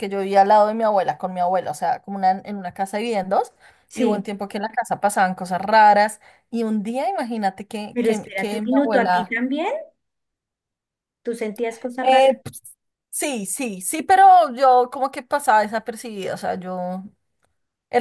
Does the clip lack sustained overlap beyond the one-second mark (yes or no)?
no